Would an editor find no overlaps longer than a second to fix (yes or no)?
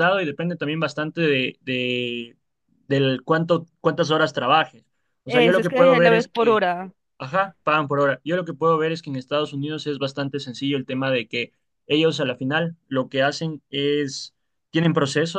no